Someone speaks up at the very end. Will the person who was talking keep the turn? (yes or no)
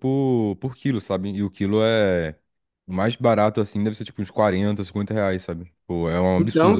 no